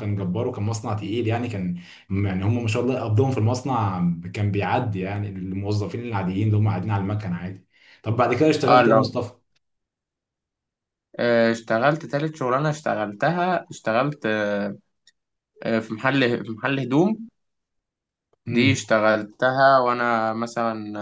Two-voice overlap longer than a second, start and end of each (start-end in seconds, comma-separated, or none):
none